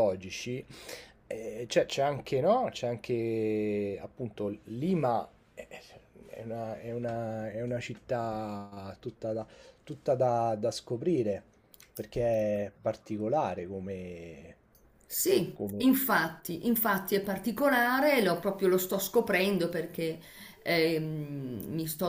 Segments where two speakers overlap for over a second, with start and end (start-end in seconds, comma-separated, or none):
none